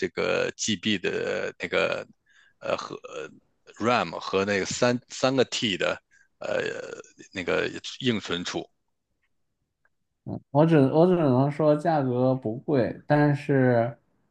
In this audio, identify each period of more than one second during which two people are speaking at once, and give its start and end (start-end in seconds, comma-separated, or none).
none